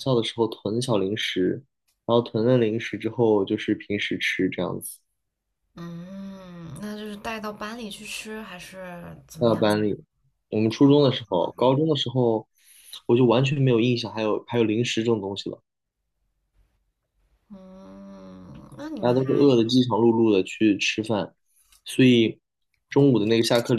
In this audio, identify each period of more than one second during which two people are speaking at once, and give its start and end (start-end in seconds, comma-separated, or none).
none